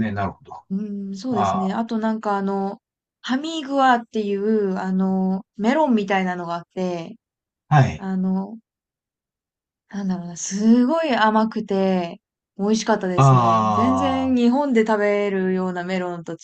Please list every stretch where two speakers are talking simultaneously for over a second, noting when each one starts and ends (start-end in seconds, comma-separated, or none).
13.2-14.4